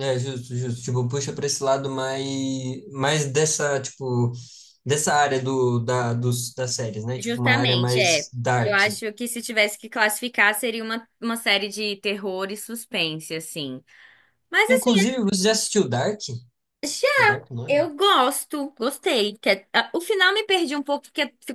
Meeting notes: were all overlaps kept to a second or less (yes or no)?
no